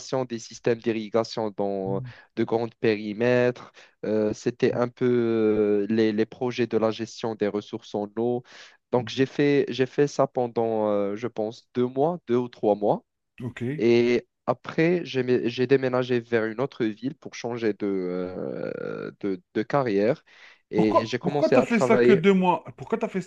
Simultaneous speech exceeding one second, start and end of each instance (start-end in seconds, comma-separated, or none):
20.7-22.2